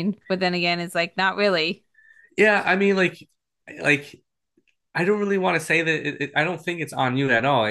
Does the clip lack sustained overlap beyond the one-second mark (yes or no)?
yes